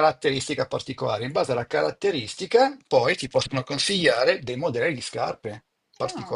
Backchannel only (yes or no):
no